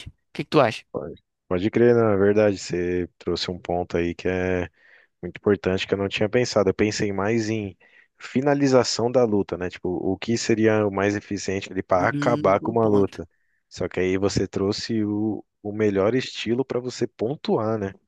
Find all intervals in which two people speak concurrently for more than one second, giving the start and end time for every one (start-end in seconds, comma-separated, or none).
12.0-13.2